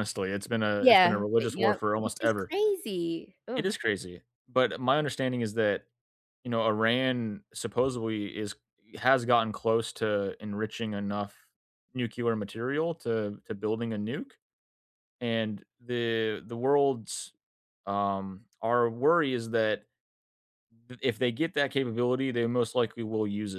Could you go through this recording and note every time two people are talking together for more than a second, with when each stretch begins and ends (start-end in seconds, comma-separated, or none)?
0.8-2.5